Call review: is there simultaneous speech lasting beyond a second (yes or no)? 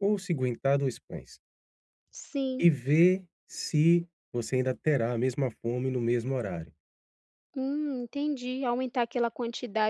no